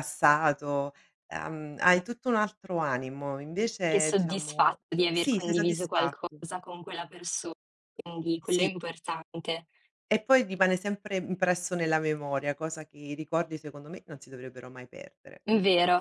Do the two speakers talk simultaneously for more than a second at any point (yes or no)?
yes